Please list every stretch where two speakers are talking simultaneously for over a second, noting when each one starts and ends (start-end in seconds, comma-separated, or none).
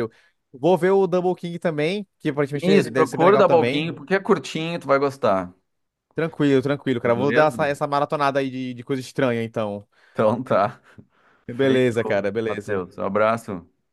2.6-4.0, 11.5-12.8